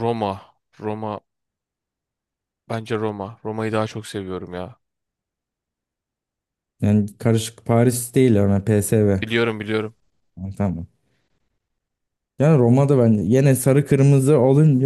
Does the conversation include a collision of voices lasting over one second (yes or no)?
no